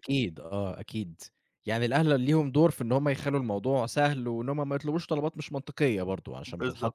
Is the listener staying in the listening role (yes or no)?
yes